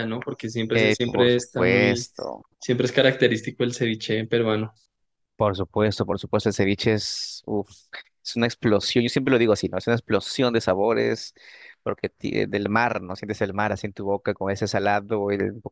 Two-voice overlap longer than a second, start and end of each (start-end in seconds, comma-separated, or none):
0.7-2.0